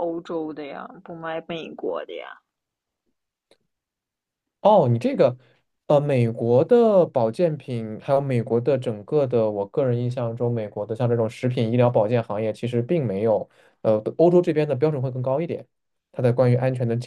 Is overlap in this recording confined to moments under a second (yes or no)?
yes